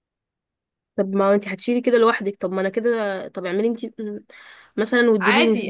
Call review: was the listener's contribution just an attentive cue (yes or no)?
no